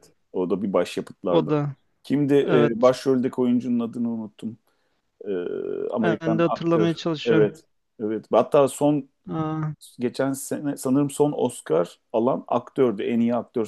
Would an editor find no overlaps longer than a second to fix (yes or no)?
no